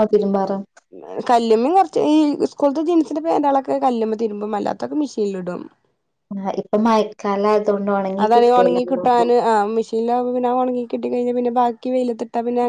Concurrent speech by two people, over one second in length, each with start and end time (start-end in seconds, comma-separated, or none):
none